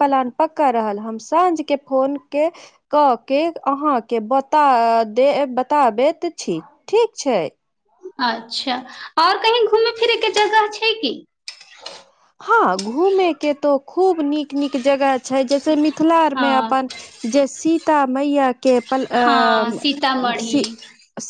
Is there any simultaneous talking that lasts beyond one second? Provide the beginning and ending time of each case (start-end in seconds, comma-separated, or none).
19.2-20.6